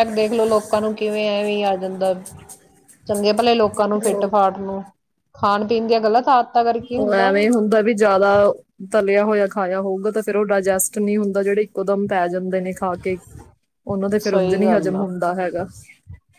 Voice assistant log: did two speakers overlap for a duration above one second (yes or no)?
no